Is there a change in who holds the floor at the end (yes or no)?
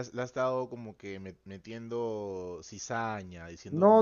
yes